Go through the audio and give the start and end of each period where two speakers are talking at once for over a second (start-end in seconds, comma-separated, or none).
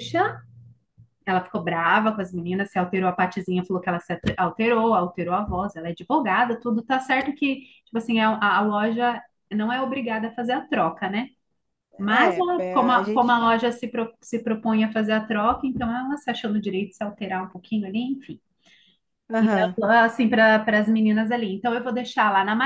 12.0-13.3